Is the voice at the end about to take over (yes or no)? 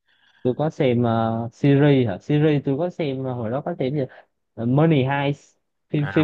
yes